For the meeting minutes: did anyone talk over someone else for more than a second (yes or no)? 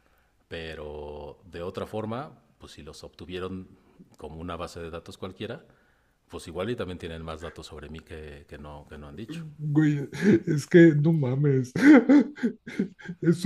no